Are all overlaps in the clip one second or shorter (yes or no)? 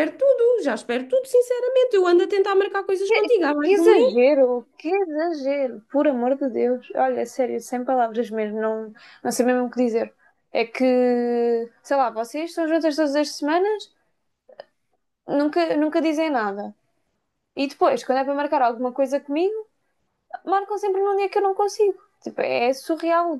yes